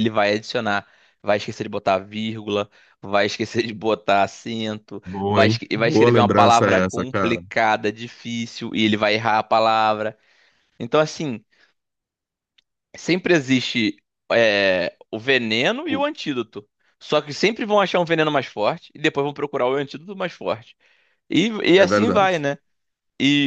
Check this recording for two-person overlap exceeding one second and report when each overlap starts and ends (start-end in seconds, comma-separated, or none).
5.0-7.4